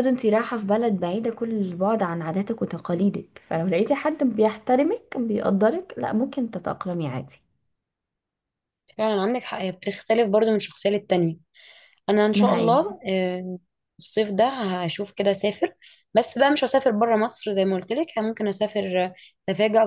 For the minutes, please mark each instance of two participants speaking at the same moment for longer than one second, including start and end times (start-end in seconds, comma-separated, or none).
none